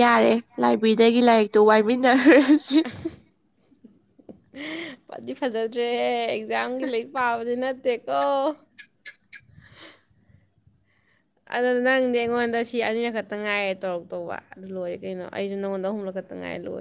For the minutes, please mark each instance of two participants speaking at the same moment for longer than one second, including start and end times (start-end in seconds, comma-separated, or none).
none